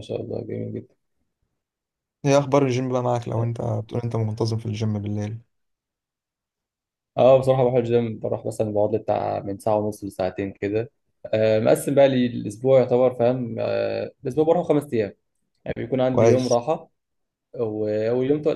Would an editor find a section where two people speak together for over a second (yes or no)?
no